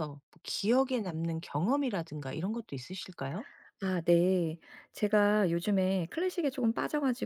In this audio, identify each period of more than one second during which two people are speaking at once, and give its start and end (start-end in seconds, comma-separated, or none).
none